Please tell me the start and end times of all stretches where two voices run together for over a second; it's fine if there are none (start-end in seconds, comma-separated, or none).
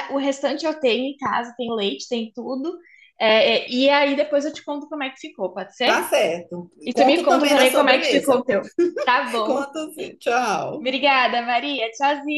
6.8-8.4